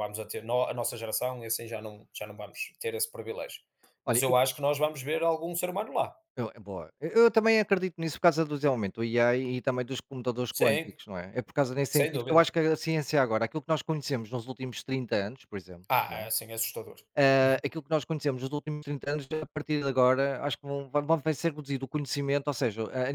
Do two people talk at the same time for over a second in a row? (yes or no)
no